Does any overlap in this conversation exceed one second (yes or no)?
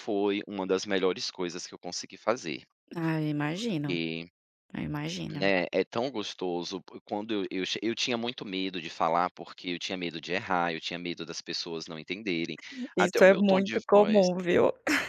yes